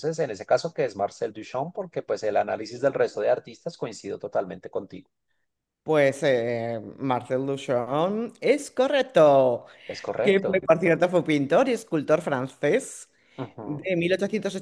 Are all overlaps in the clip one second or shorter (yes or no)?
yes